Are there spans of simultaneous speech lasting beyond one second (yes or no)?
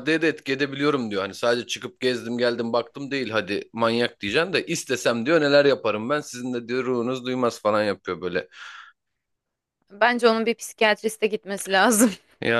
no